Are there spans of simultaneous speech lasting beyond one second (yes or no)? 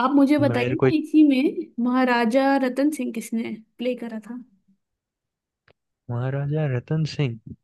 no